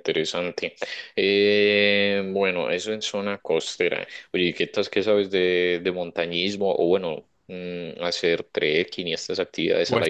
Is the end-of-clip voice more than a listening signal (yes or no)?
yes